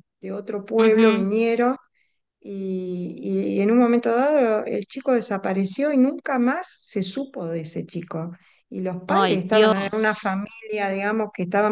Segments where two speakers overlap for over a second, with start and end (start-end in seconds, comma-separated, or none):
9.1-10.4